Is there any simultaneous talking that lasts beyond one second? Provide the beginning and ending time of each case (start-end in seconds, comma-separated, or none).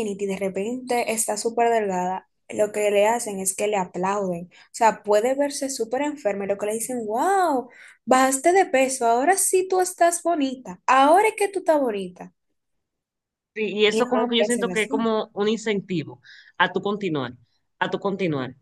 13.9-15.1